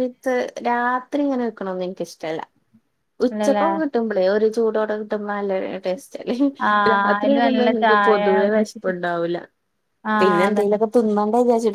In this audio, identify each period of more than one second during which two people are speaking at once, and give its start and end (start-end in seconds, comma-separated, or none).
6.9-8.9